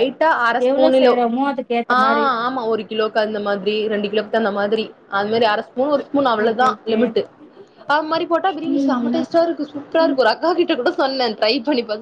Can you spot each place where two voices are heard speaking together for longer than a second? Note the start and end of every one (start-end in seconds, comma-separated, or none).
none